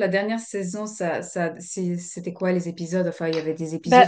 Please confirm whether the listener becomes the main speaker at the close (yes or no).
no